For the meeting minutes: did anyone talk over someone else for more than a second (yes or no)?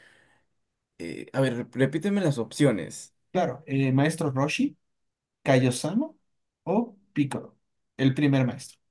no